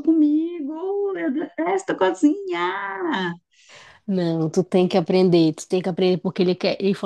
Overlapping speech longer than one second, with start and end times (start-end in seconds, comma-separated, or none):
none